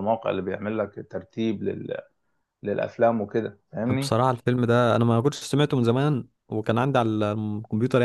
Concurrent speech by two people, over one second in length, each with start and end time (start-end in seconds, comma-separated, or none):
none